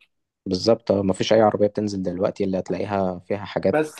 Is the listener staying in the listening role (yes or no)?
no